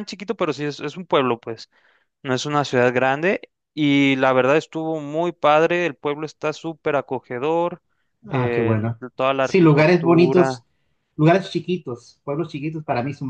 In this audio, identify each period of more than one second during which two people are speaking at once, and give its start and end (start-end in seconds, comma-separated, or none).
9.4-10.6